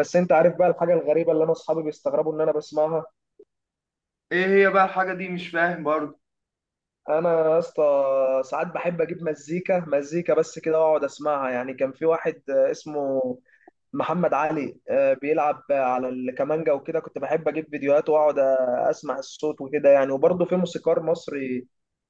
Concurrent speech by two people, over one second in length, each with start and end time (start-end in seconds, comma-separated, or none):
none